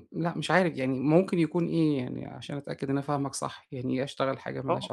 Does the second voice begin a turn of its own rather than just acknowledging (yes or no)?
yes